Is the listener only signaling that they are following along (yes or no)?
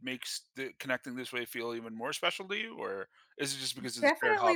no